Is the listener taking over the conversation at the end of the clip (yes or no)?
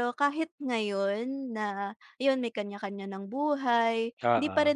no